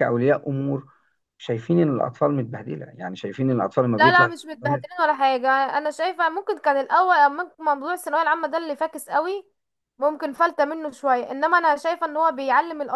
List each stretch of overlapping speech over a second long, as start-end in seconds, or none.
none